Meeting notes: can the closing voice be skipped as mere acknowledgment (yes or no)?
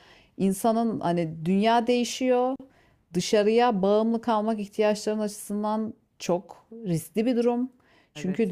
yes